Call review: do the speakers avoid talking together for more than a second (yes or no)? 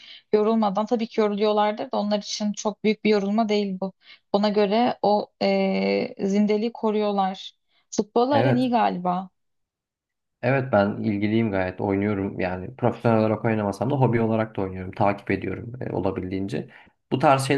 yes